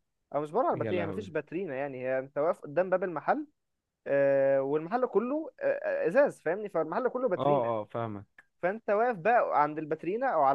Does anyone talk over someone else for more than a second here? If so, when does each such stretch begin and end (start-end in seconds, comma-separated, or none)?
none